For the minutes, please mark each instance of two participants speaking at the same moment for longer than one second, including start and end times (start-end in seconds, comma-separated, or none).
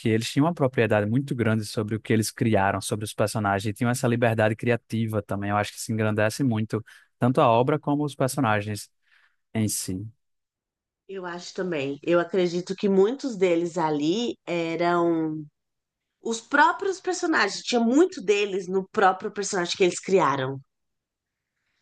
none